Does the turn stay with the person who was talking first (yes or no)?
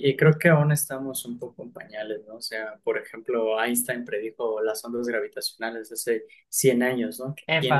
yes